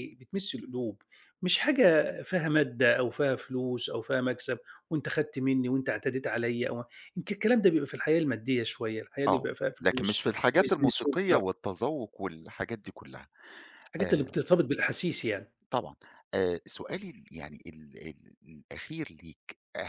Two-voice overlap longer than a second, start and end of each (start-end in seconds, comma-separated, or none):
9.3-11.6